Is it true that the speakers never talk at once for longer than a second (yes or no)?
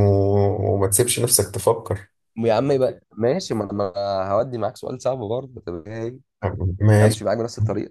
yes